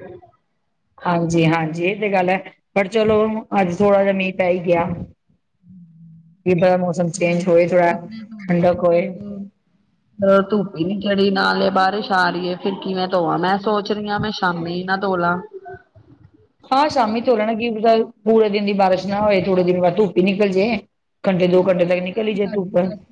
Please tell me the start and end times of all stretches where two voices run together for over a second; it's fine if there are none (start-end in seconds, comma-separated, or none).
none